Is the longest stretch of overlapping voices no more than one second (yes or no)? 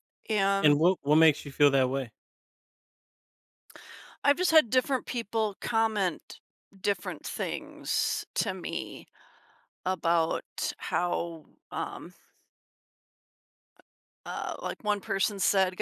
yes